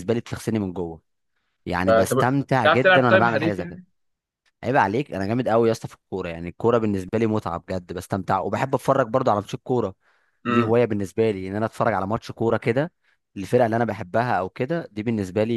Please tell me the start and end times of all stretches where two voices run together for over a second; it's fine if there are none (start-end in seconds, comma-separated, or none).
1.9-3.8